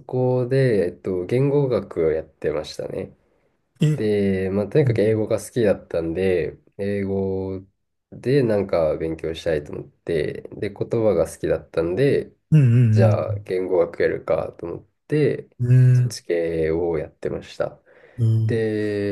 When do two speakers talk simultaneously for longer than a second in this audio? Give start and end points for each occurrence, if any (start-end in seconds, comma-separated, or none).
none